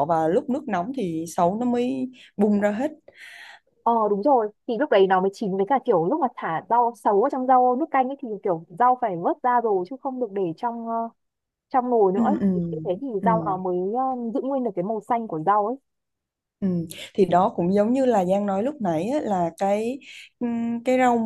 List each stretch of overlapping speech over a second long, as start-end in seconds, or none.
none